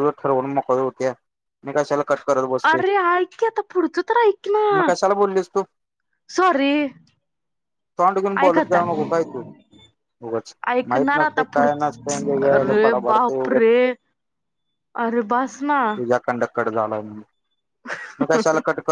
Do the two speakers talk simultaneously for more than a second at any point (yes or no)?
yes